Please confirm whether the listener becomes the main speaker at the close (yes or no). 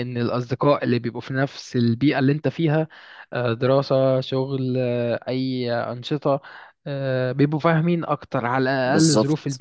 yes